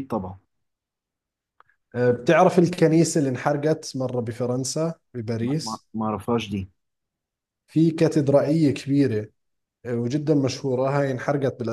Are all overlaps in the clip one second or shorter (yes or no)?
yes